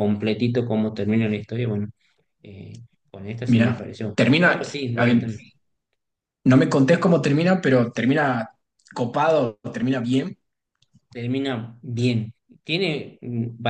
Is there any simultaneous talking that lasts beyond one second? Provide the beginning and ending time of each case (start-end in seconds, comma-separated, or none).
3.5-5.3